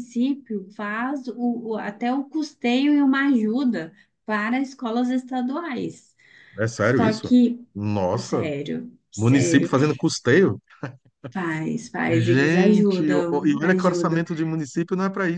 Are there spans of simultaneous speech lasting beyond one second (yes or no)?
yes